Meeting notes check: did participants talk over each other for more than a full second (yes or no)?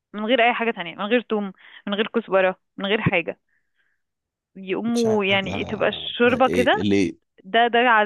yes